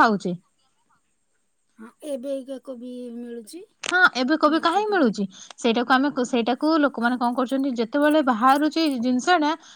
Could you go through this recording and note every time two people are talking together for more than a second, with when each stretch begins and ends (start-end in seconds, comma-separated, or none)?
none